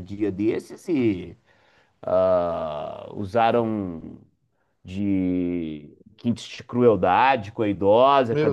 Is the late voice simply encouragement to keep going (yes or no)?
yes